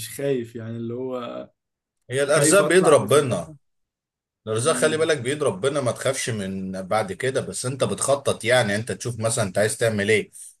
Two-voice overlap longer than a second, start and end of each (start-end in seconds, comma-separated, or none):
2.3-3.5